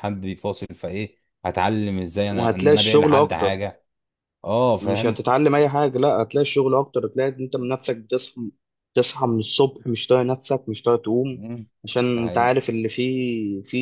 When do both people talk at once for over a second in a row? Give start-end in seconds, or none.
2.4-3.6